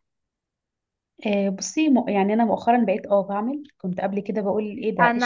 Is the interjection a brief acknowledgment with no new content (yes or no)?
no